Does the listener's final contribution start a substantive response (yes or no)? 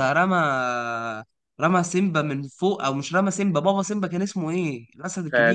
yes